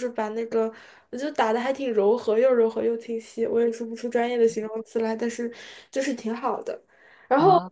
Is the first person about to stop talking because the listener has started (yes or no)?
no